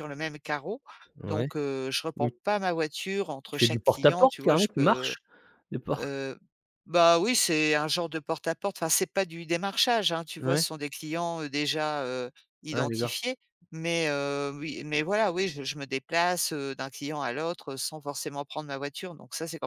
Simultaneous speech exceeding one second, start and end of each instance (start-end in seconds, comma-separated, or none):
3.5-5.1